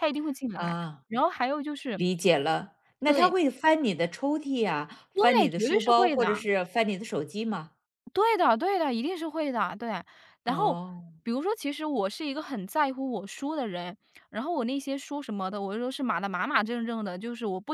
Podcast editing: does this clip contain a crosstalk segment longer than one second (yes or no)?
yes